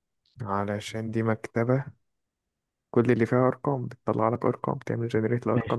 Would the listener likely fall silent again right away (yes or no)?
no